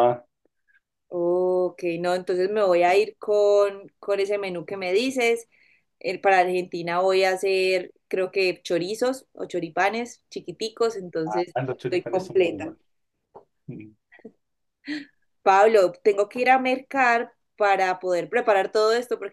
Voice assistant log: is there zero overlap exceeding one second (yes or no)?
no